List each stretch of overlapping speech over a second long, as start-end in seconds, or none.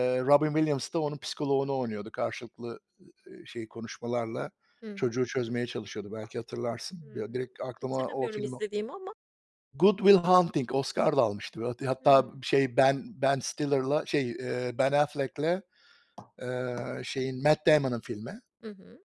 7.0-8.5